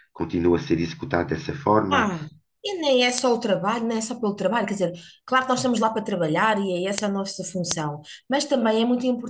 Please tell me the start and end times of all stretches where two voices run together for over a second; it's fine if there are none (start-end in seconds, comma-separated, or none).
none